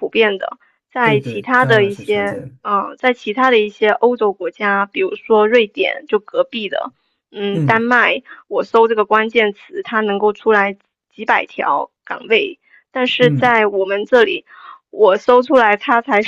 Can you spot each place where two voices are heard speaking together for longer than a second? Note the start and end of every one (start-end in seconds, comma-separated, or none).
1.0-2.5